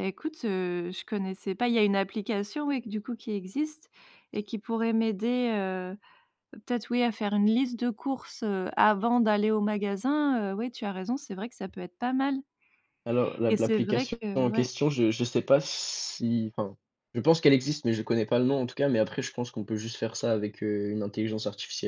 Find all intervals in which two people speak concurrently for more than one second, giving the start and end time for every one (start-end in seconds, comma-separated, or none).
13.5-14.7